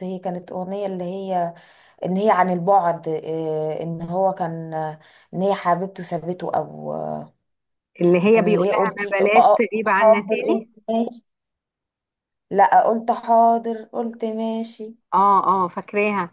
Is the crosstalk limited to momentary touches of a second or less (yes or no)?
no